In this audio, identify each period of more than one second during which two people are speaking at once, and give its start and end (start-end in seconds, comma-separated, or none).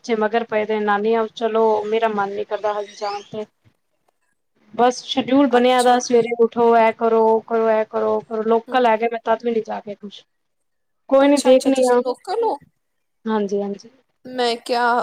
none